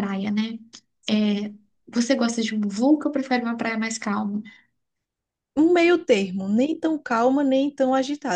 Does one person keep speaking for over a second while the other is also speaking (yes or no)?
no